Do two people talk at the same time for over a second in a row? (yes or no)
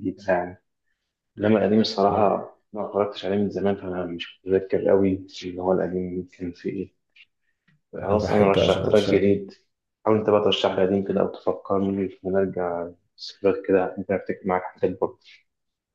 yes